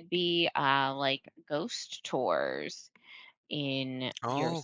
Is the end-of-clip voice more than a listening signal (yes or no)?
yes